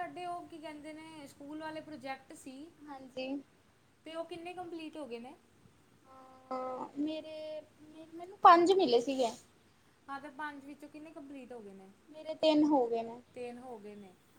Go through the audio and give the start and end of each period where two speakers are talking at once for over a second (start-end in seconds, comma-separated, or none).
none